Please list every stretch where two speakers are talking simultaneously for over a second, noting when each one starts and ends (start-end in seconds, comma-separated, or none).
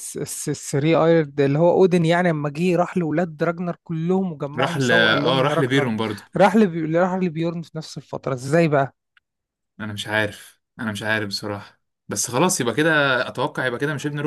4.6-6.0